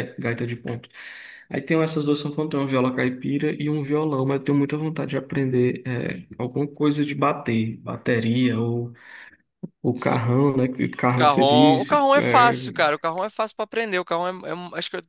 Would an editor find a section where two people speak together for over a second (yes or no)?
yes